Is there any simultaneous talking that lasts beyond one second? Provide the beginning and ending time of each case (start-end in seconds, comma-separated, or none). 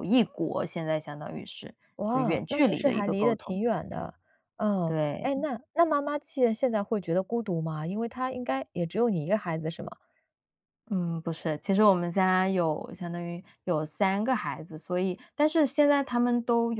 2.1-3.6